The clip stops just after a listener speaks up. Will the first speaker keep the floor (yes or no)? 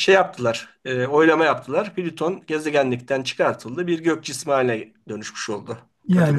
no